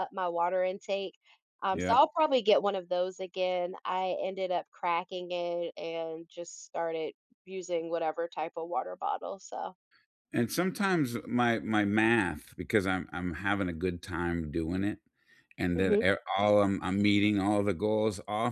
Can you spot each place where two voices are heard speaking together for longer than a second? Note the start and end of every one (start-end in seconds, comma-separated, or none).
none